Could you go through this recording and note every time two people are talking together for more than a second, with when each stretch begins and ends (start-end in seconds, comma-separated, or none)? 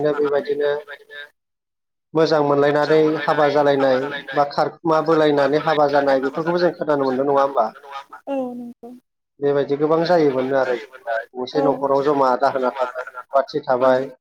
11.4-13.6